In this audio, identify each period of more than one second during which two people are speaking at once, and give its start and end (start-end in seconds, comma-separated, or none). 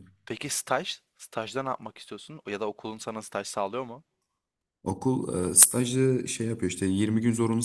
none